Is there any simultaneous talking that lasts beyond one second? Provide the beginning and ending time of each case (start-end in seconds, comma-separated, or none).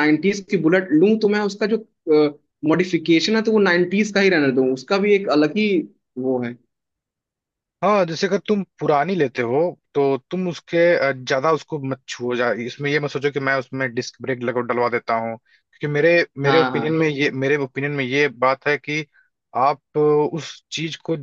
none